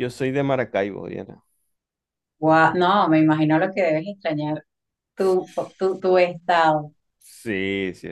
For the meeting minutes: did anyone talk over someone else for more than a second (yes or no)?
no